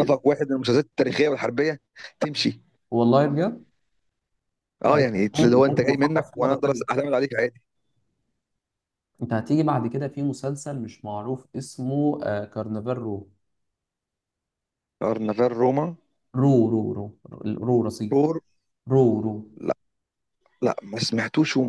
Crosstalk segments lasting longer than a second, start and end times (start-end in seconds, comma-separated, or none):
4.8-6.8